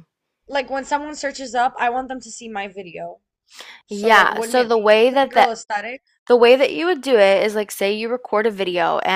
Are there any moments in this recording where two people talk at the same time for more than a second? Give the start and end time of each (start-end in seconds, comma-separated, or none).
3.9-5.5